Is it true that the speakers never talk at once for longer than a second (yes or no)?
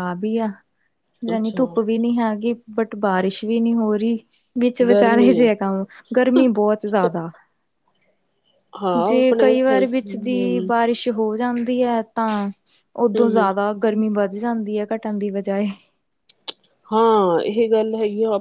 no